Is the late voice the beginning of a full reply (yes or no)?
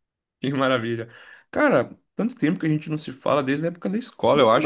yes